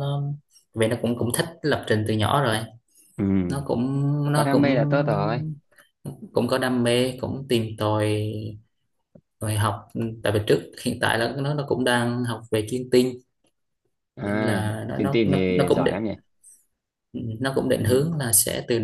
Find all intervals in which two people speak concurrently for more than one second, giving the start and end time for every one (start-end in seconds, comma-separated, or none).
14.2-15.9